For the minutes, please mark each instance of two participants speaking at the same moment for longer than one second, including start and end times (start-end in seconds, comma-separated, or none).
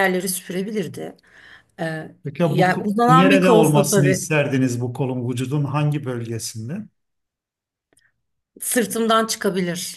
2.2-4.3